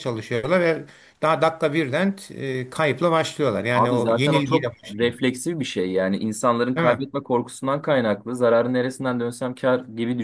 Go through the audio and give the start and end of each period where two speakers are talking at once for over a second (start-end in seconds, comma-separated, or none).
3.7-5.1